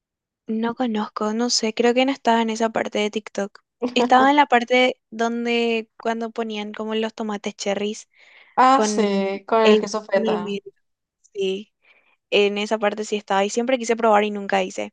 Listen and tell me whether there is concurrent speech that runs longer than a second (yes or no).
yes